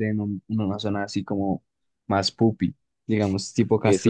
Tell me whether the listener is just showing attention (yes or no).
no